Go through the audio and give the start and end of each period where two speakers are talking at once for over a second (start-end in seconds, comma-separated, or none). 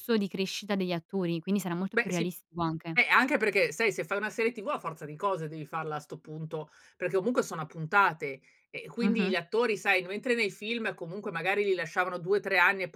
none